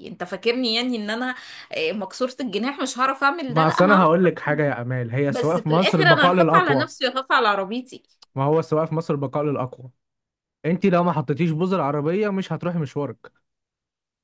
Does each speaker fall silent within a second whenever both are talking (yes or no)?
no